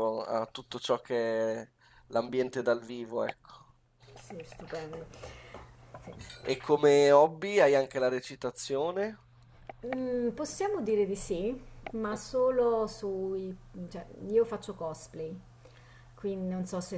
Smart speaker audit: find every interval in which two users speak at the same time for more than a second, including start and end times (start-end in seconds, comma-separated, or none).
none